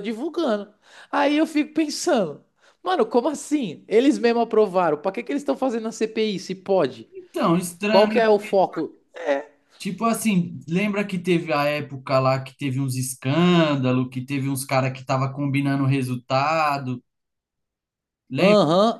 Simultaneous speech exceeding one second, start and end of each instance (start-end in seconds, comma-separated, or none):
none